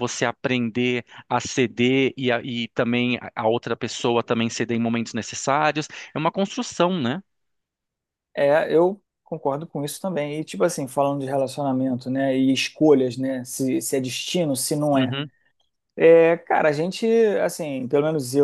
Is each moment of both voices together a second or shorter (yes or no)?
yes